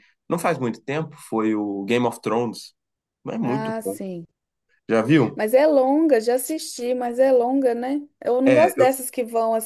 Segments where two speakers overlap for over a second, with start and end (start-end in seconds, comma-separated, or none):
none